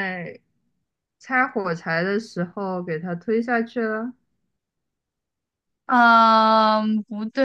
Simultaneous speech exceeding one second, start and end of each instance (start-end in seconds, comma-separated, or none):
none